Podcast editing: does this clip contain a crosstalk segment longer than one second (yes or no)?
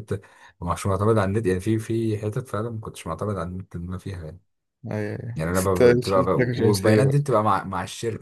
yes